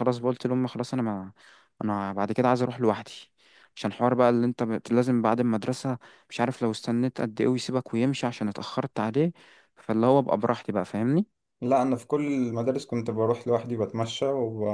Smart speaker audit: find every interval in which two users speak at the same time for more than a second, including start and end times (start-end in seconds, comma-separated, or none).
none